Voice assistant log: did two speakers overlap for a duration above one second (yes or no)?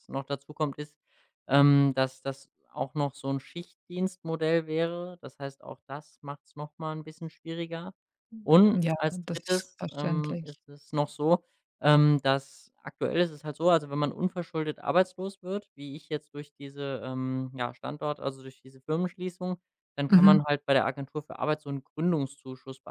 yes